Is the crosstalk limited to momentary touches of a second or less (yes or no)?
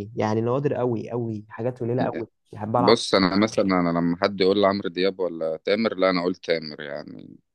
yes